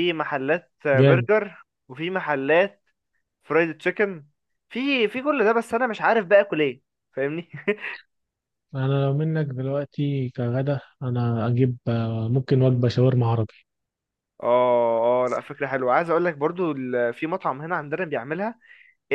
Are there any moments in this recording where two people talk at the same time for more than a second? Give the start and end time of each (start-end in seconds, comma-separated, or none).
none